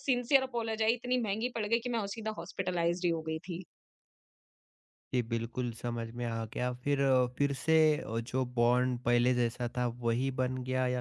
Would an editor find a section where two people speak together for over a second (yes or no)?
no